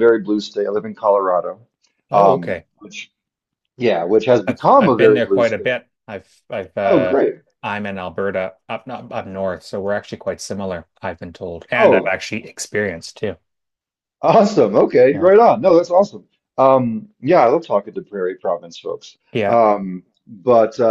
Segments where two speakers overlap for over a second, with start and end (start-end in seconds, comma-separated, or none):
4.5-5.8